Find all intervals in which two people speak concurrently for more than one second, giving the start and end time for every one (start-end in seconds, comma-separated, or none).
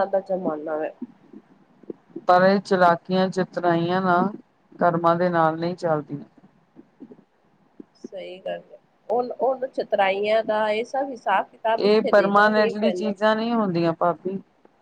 11.8-13.1